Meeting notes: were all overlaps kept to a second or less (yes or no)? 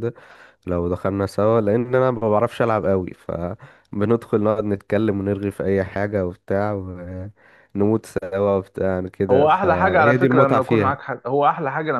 no